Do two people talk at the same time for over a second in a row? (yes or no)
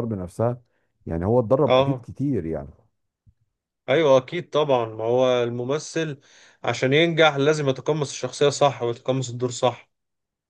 no